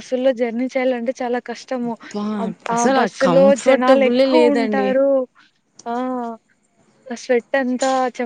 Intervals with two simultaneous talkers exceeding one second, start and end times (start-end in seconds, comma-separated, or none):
2.8-4.9